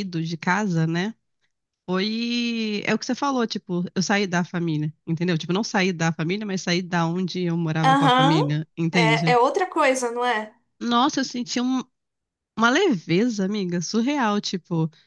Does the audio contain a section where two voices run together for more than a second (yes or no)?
yes